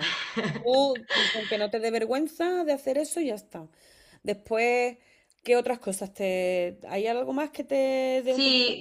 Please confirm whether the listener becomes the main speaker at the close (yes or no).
yes